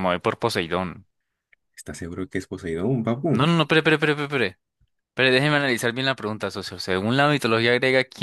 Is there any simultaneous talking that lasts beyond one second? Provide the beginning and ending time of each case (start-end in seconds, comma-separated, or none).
none